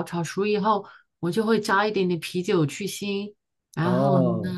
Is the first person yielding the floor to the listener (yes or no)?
yes